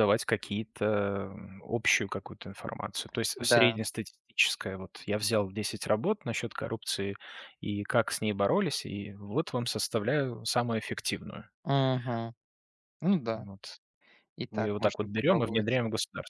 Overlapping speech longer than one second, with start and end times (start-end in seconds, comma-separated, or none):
14.5-15.8